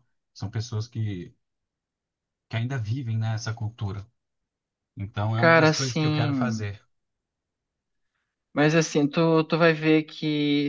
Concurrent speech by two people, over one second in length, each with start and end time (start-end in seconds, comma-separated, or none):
5.3-6.7